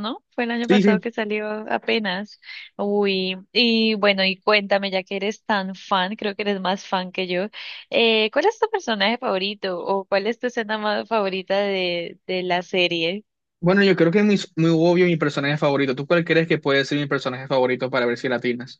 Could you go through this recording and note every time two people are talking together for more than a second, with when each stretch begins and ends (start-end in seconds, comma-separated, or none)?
none